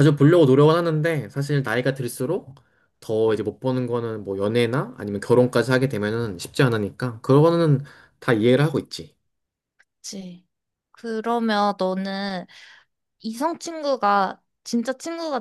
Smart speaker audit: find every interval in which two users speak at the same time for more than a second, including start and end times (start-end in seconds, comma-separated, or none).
none